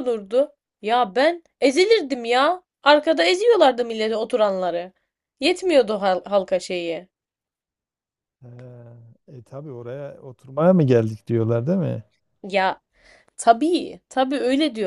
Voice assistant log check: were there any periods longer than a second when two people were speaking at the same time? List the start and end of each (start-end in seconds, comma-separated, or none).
none